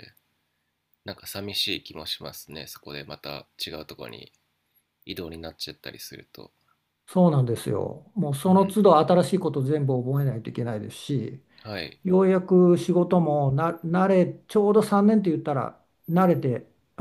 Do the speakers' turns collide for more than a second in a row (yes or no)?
no